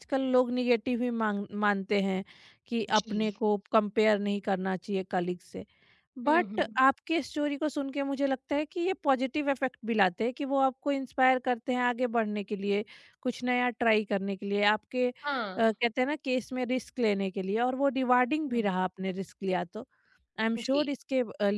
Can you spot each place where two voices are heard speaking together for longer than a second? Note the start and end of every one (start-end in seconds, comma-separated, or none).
none